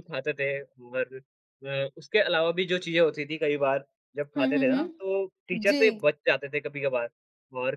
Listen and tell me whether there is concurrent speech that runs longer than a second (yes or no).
yes